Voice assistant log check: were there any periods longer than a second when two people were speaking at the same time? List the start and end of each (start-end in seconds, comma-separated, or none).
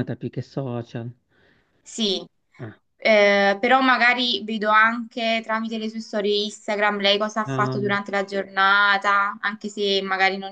none